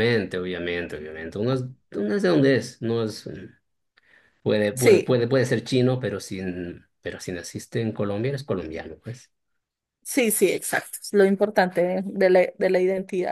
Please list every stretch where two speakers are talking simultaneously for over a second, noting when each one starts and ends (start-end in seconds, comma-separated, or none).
none